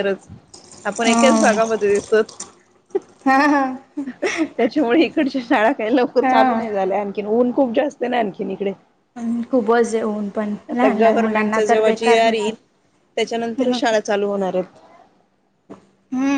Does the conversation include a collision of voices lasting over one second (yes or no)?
yes